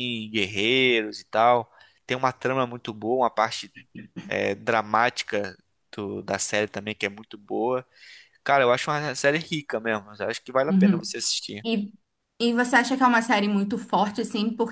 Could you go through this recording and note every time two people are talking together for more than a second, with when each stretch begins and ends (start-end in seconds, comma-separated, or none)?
none